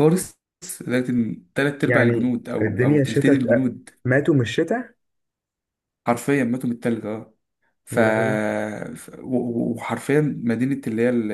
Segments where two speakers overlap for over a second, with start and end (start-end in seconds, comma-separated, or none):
1.9-3.4